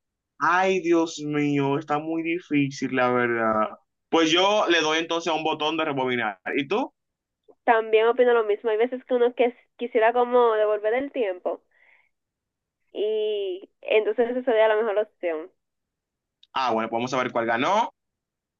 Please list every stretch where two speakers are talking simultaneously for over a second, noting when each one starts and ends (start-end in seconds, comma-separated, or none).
none